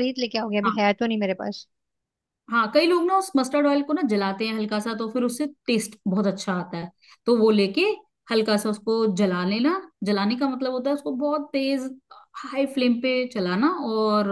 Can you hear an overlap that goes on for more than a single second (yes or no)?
no